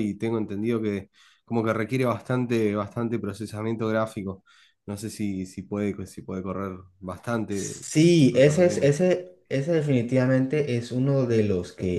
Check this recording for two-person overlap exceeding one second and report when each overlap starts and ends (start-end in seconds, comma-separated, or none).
7.5-9.0